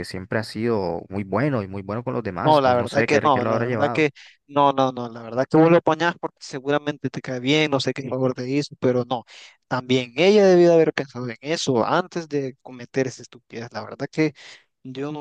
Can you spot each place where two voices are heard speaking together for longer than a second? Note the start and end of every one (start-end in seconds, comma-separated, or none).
2.4-4.1